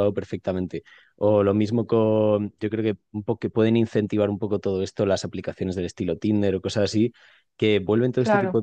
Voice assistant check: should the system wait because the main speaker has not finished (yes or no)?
yes